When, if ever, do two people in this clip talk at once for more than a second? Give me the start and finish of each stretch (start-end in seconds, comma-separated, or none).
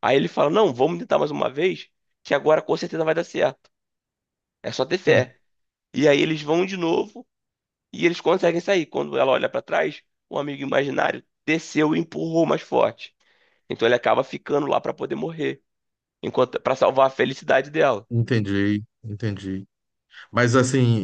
none